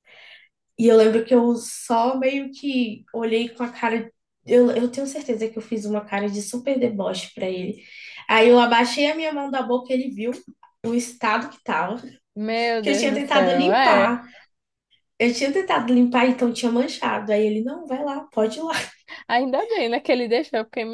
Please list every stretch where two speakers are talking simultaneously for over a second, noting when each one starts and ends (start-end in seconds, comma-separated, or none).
12.7-14.2